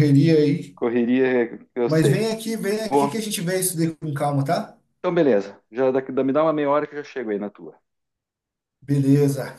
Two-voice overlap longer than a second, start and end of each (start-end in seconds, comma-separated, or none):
none